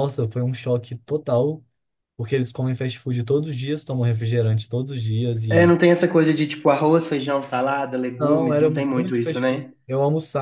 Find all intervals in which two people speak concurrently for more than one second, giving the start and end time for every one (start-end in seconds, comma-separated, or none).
8.2-9.7